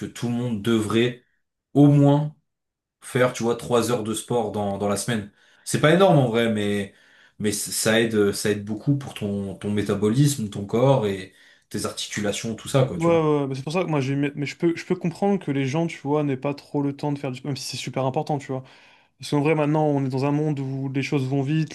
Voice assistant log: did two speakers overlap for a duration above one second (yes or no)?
no